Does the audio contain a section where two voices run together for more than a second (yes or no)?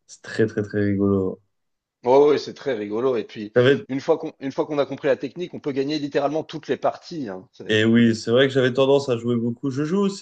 no